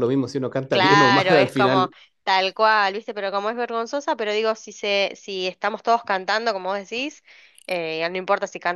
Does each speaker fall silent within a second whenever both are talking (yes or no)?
no